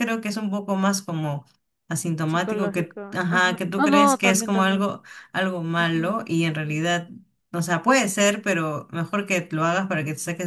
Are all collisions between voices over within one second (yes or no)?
no